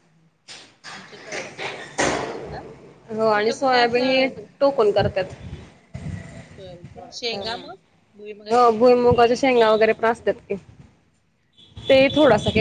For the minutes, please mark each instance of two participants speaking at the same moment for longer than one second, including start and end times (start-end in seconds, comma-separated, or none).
none